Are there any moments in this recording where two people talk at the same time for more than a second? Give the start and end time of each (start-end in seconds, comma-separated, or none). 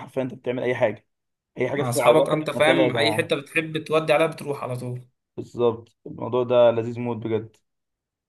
1.8-3.4